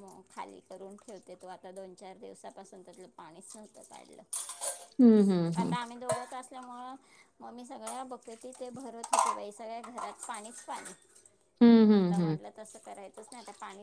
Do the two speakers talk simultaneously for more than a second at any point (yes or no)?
no